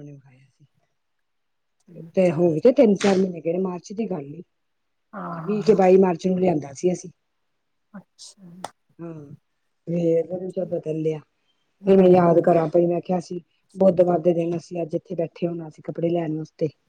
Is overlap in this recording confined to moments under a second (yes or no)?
yes